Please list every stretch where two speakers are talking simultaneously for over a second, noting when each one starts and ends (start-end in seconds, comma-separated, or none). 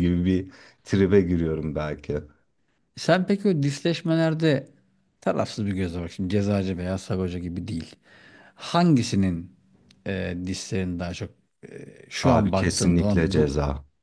12.2-13.5